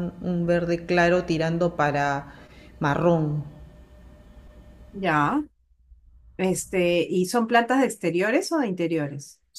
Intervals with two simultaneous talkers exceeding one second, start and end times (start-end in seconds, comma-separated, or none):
none